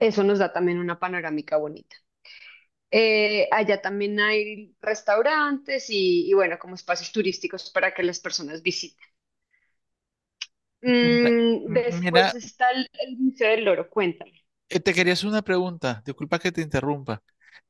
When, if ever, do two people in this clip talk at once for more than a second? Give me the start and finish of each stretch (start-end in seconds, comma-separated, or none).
11.0-12.4